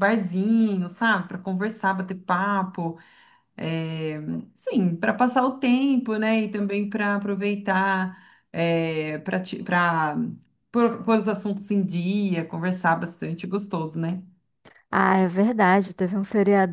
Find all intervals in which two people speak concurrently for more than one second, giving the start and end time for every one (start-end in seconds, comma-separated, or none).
none